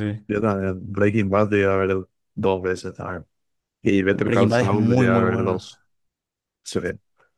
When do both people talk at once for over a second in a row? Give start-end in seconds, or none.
4.3-5.7